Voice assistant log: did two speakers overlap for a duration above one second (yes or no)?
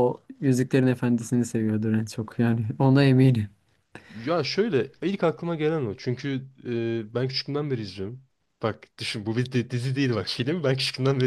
no